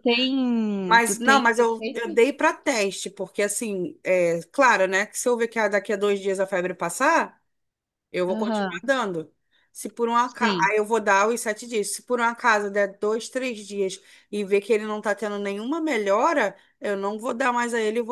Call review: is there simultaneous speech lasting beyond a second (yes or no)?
yes